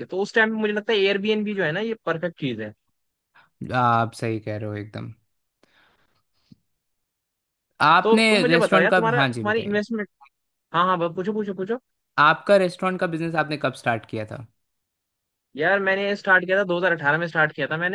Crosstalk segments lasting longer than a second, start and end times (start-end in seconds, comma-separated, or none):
8.0-9.8